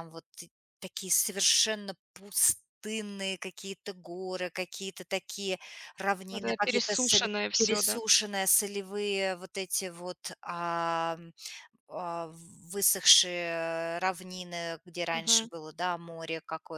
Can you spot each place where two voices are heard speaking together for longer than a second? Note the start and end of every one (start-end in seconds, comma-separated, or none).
6.3-8.0